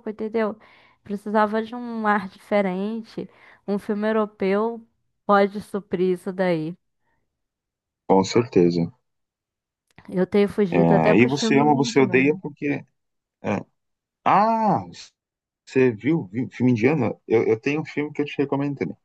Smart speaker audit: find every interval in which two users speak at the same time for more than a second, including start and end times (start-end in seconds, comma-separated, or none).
10.7-12.4